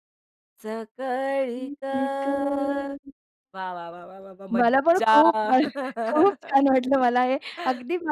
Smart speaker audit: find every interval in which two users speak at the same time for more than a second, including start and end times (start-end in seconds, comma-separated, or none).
none